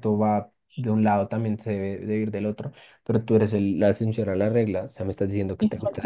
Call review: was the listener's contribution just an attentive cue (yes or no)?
no